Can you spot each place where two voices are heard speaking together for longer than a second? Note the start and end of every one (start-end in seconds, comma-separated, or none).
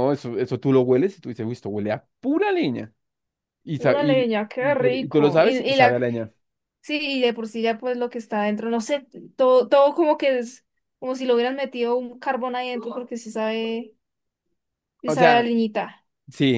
3.8-6.0